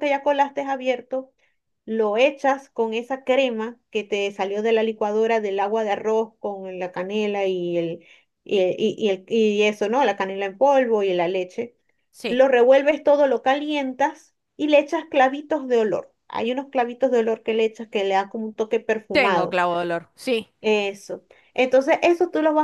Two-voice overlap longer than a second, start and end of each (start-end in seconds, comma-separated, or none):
none